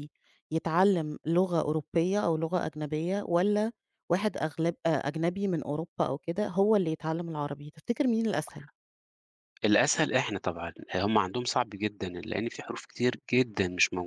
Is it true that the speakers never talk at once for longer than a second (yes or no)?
yes